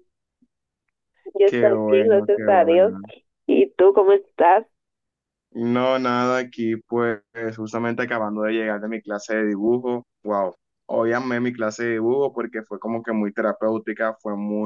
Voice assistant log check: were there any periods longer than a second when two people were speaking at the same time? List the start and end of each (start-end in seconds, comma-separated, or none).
1.4-2.9